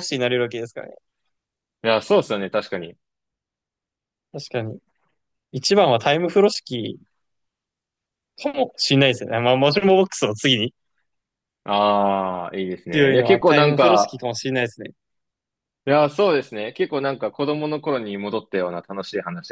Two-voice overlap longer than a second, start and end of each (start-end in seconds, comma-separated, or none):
12.9-14.2